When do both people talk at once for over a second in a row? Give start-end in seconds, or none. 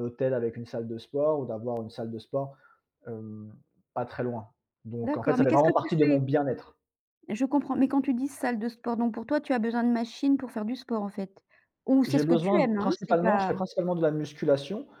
5.0-6.2, 12.1-13.5